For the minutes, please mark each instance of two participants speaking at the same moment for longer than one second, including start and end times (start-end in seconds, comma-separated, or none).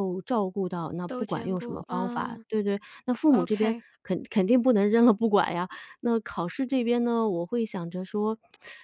1.1-2.5